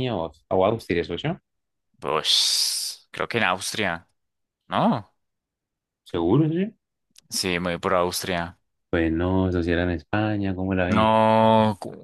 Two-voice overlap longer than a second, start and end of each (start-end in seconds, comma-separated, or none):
none